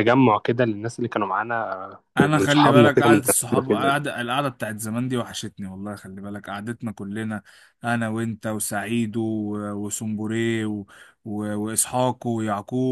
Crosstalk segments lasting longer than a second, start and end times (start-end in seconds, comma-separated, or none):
2.2-4.0